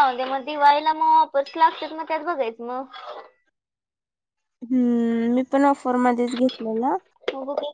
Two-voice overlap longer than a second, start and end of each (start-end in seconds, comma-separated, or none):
none